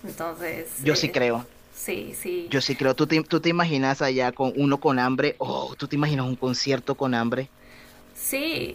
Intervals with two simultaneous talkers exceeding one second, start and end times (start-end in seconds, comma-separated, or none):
none